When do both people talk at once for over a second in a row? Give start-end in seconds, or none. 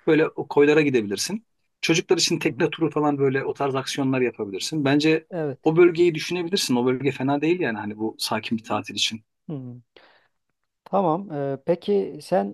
none